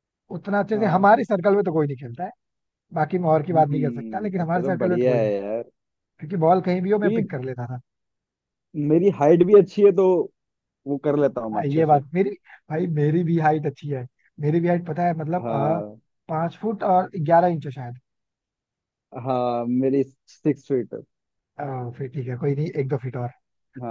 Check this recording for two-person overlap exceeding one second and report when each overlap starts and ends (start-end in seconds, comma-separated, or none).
3.5-5.3